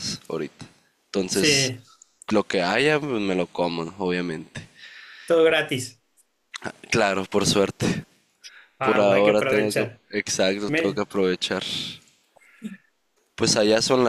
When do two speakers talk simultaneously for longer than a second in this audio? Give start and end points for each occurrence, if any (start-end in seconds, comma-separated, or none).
8.8-10.0